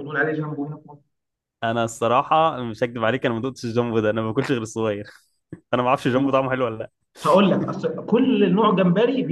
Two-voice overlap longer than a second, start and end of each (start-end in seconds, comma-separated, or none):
none